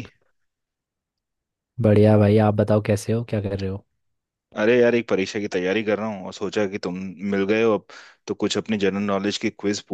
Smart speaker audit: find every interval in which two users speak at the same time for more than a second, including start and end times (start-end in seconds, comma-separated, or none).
none